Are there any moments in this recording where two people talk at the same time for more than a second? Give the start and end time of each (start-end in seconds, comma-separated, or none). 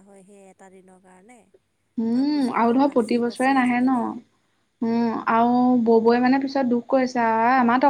2.1-4.1